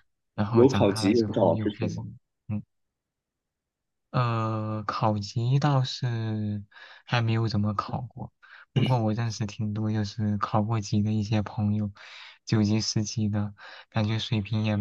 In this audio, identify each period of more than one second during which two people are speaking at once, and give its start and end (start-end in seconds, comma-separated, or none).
0.5-2.0